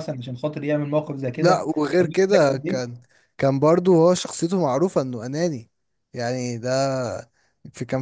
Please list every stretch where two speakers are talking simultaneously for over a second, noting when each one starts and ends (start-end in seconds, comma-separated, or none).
1.4-2.9